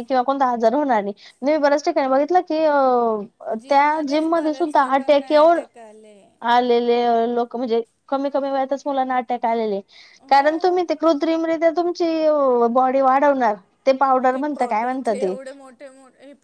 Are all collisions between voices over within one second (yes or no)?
no